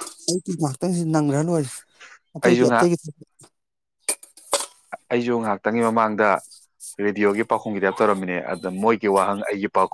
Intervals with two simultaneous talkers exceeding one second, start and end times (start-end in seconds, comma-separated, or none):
none